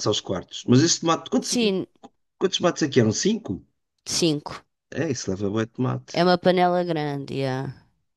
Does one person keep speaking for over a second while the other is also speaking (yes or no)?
no